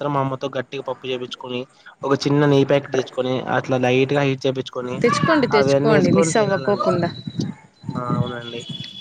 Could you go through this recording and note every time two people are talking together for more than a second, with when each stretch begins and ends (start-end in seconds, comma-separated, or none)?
5.6-6.9